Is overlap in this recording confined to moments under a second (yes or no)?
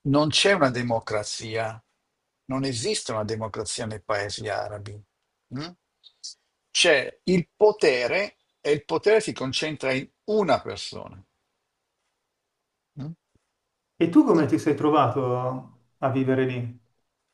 yes